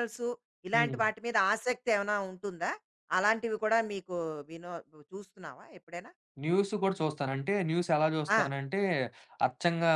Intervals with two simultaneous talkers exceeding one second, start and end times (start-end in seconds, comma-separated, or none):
none